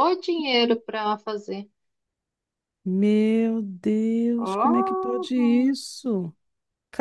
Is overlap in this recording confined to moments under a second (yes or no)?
no